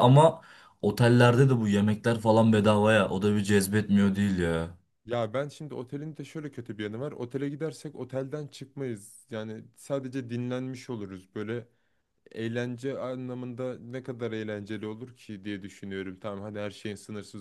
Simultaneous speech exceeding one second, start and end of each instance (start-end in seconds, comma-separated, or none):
none